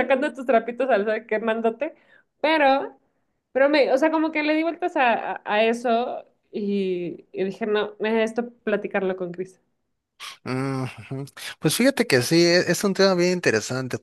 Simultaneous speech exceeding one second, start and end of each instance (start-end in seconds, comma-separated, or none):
none